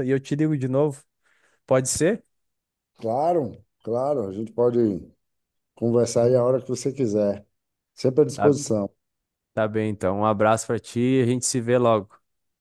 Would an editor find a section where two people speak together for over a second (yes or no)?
no